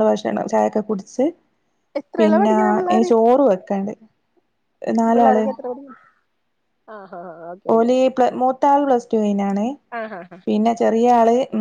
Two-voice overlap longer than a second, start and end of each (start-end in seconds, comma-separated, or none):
none